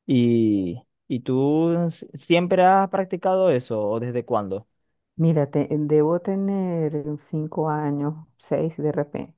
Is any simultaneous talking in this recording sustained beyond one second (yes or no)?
no